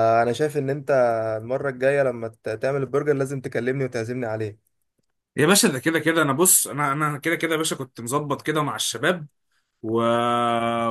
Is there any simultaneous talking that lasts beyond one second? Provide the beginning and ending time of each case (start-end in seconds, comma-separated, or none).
none